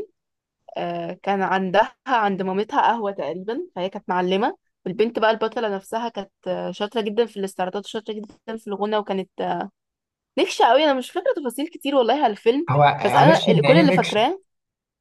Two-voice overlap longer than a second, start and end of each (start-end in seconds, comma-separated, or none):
12.7-14.3